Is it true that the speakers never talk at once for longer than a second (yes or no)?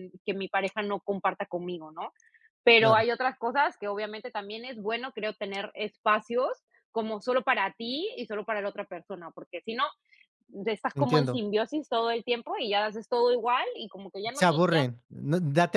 yes